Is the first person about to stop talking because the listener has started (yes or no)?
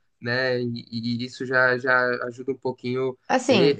yes